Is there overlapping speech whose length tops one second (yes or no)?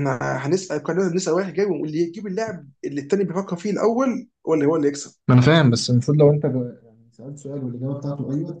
no